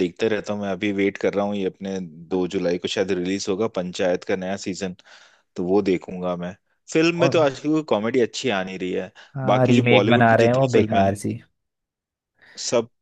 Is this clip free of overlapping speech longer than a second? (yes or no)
no